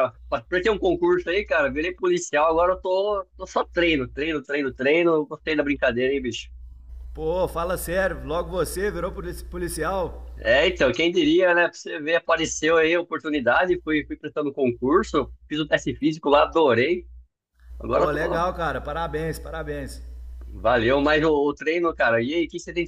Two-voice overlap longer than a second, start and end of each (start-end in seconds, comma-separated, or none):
none